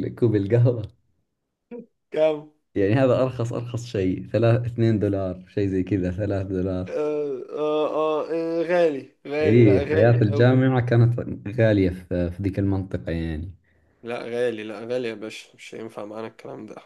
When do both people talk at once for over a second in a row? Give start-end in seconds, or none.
9.4-10.6